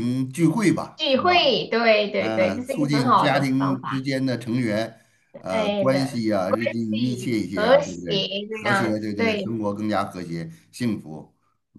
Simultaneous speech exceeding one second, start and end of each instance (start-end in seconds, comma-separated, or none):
2.2-4.0, 5.4-9.6